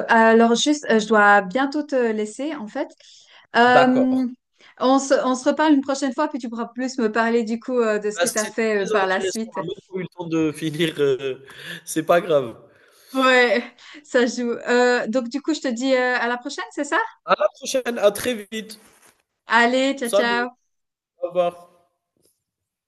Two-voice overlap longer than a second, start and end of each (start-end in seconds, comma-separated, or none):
8.1-9.6